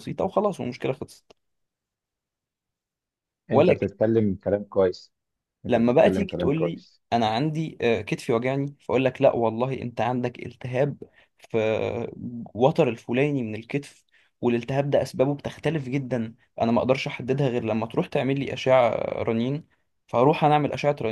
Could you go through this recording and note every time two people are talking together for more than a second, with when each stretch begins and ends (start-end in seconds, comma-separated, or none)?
5.7-7.0